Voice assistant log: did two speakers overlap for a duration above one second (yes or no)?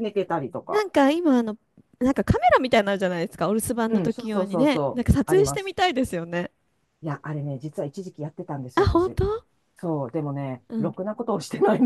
yes